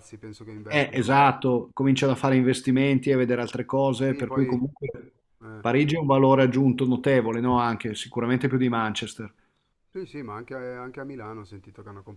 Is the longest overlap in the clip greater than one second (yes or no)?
no